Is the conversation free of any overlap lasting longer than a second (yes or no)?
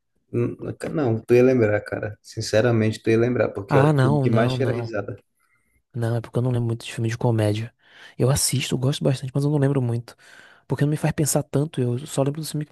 no